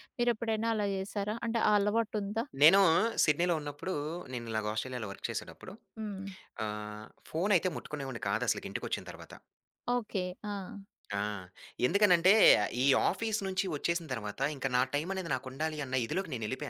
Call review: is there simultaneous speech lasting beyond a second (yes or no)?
no